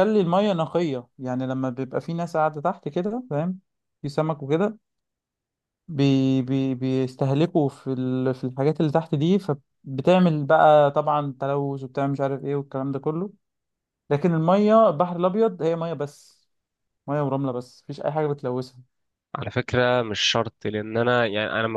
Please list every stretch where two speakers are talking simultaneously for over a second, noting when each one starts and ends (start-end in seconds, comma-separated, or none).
none